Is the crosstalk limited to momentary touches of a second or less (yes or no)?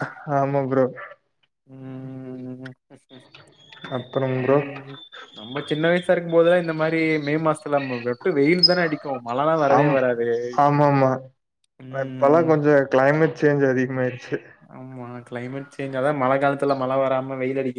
yes